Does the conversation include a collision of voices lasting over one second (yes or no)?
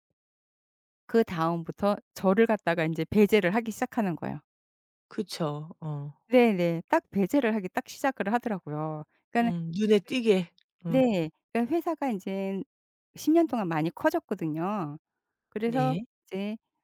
no